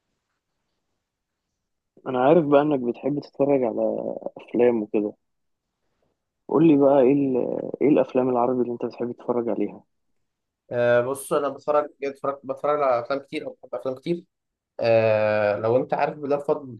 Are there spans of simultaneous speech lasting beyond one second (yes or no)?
no